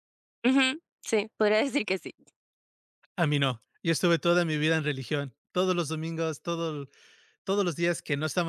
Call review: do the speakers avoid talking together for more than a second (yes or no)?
yes